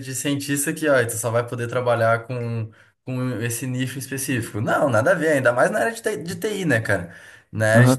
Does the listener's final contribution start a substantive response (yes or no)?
yes